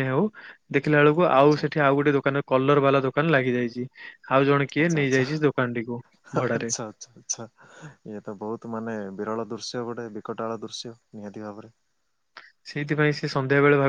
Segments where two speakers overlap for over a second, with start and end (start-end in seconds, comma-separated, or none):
none